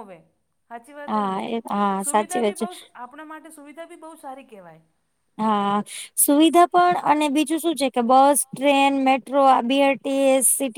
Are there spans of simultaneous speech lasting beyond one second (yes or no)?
yes